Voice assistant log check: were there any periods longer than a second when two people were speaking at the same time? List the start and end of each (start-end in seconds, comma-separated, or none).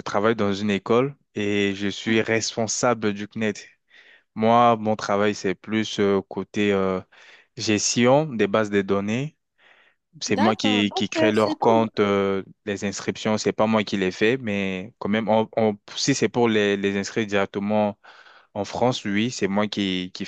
10.3-11.9